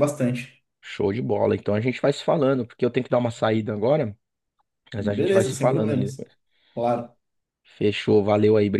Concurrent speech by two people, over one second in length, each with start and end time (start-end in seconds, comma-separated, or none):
5.0-6.3